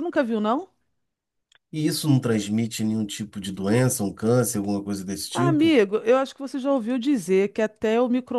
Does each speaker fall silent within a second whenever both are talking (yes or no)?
yes